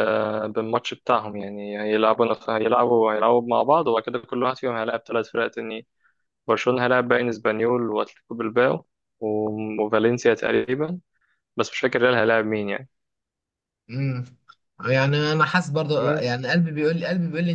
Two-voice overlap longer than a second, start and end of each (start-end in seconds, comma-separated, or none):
none